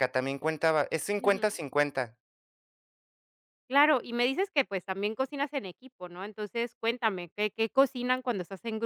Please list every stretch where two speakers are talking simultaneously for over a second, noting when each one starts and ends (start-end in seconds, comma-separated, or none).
none